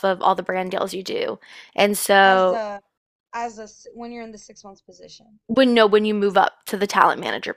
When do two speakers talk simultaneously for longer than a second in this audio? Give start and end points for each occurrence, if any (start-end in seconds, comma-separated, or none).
none